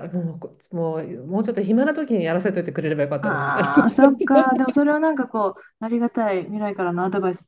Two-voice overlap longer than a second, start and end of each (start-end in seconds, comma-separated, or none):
3.2-4.5